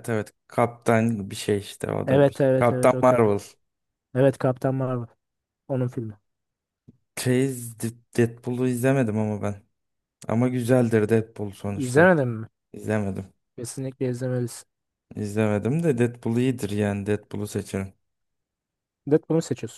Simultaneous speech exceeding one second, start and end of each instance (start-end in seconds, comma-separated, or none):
2.1-3.3